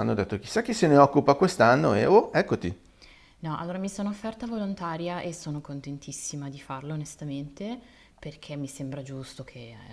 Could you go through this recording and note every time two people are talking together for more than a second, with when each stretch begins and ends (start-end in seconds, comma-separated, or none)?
none